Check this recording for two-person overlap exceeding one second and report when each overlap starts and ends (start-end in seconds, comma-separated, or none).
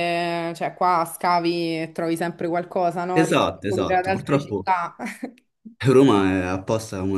3.1-4.7